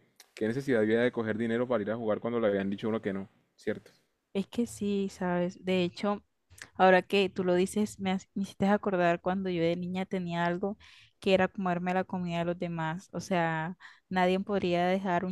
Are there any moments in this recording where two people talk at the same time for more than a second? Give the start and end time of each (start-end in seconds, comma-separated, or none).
none